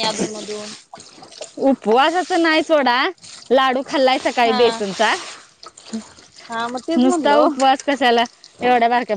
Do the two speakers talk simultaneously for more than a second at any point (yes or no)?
no